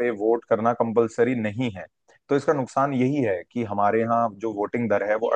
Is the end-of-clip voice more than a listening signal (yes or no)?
no